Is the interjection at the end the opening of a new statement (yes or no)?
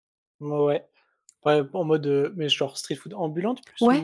yes